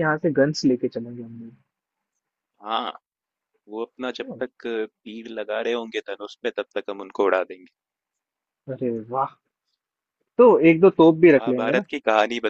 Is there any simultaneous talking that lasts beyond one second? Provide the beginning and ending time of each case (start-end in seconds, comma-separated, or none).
none